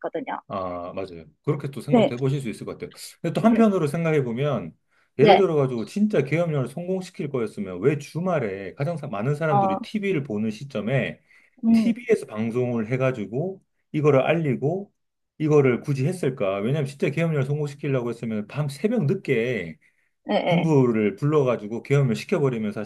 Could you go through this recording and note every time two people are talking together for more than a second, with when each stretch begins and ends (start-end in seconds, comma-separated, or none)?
none